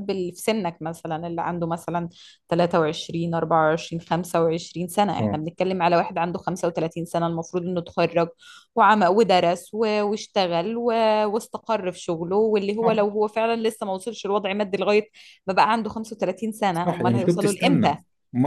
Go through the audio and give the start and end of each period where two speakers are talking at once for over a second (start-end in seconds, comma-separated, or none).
16.7-18.0